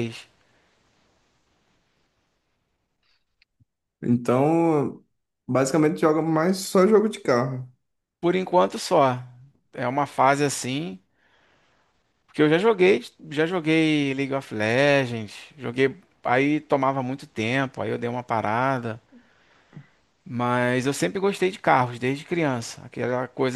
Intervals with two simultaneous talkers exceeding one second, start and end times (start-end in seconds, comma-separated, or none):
none